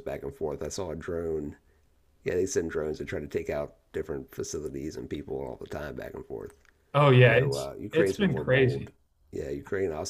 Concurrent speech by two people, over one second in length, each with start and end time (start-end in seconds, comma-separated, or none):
7.2-8.9